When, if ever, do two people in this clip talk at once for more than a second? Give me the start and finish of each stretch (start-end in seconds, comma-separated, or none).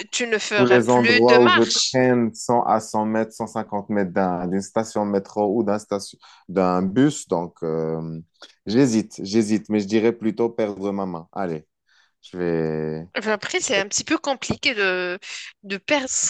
0.6-2.0